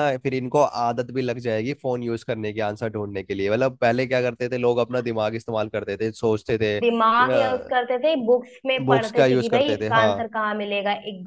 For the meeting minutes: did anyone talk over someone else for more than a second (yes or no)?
yes